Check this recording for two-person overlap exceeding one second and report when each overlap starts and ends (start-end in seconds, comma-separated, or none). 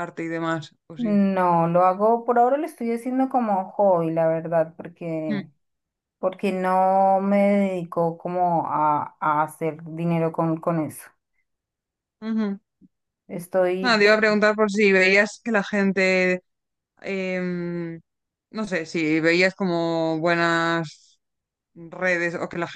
none